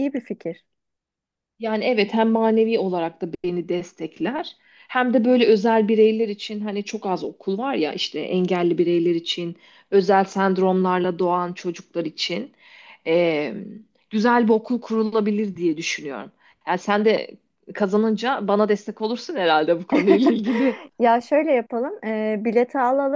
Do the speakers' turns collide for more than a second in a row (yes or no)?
no